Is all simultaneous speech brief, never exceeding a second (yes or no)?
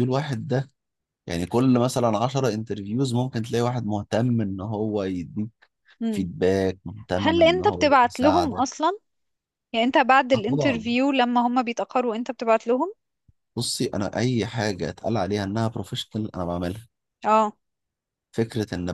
no